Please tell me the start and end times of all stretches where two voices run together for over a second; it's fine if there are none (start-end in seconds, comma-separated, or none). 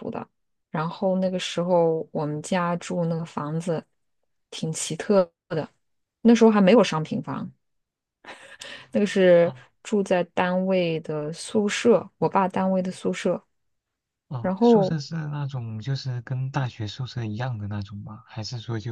none